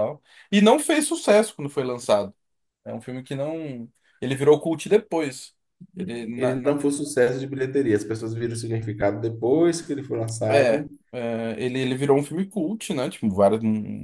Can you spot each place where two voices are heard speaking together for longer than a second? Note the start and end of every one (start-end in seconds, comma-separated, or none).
none